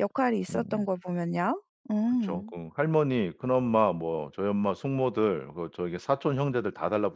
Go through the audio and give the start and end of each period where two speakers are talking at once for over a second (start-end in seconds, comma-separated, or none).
none